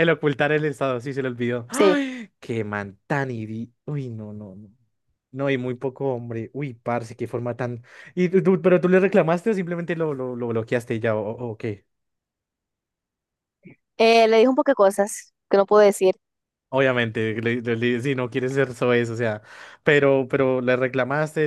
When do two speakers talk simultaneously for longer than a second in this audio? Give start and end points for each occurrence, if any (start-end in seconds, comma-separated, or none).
none